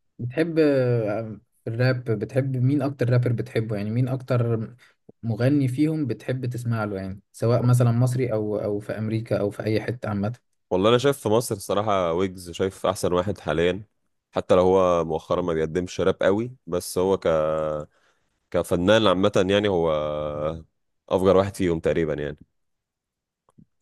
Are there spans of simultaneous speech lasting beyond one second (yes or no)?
no